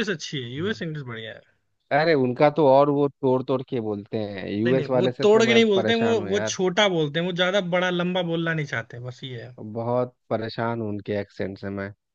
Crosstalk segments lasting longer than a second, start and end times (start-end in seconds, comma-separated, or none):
4.7-6.6